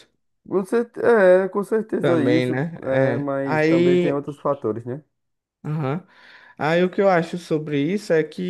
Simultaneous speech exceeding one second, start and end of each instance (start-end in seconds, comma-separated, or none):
2.0-4.2